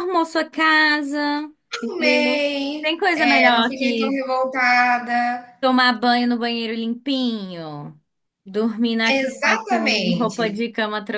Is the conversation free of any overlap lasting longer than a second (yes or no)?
no